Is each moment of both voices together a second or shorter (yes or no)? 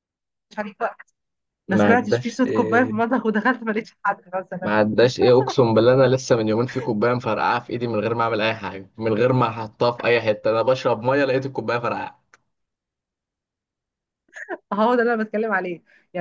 no